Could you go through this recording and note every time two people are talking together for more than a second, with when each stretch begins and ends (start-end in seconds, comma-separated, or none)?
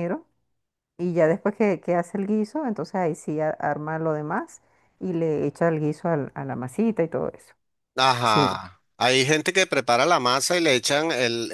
none